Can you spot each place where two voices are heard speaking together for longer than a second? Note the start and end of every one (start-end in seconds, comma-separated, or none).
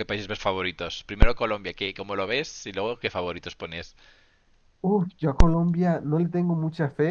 none